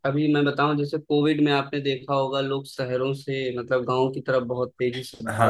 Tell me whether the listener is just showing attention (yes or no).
no